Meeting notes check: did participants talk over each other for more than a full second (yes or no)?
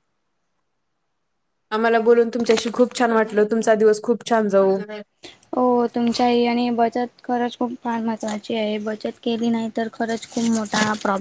no